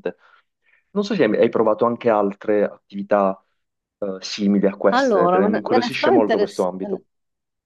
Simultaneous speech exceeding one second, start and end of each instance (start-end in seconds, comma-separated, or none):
4.9-7.0